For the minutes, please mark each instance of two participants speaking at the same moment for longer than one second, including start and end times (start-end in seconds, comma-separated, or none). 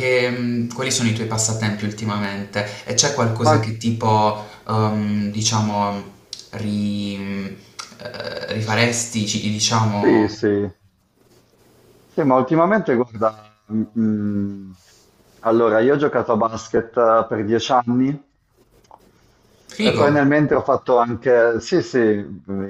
none